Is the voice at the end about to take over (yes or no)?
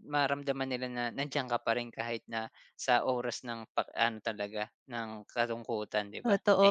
yes